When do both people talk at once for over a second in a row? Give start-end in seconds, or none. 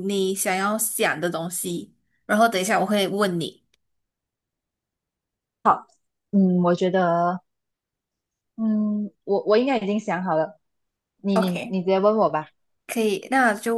none